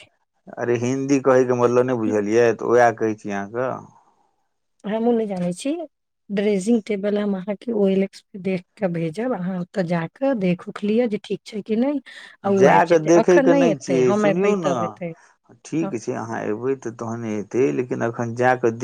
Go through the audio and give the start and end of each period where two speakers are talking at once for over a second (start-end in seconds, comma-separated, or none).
12.6-15.1